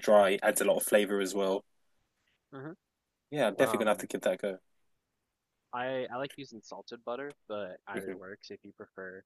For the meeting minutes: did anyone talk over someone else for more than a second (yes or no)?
no